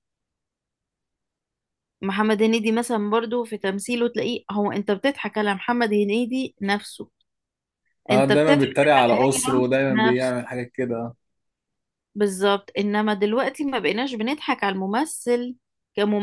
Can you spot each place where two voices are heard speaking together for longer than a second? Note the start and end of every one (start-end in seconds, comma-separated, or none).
8.1-10.4